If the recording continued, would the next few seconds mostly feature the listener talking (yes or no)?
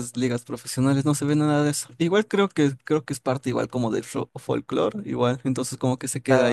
yes